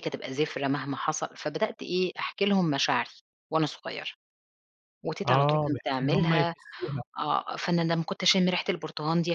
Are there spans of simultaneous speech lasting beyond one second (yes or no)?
yes